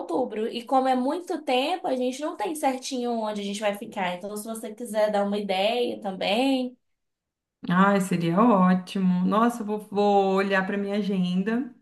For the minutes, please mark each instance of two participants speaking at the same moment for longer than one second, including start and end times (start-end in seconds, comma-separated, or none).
none